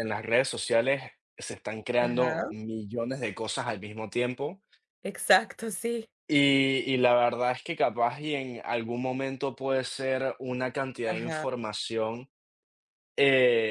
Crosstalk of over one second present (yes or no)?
no